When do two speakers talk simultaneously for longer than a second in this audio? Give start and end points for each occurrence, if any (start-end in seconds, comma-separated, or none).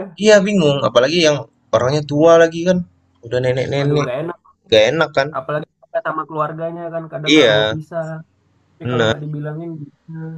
none